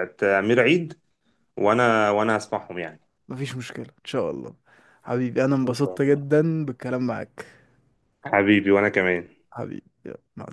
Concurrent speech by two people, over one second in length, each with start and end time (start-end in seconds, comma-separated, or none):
none